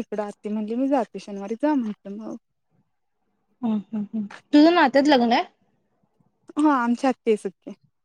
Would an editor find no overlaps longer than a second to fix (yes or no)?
yes